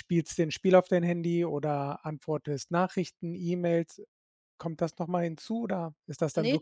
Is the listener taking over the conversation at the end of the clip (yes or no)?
yes